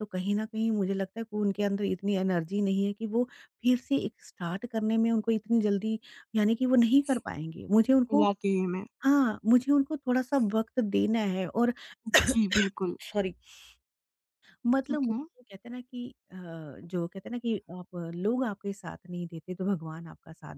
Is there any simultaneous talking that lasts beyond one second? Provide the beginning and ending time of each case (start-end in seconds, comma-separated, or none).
none